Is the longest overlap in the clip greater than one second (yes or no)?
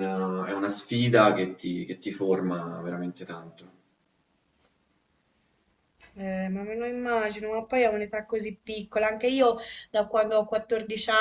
no